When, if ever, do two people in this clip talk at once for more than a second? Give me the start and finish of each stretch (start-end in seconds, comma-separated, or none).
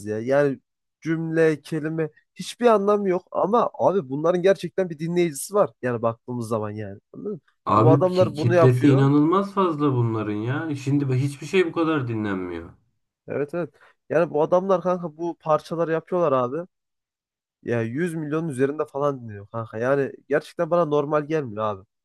7.8-9.1